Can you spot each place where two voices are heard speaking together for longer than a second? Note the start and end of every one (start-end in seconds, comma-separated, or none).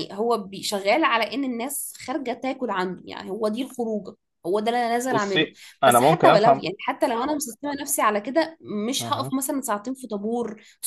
5.1-6.6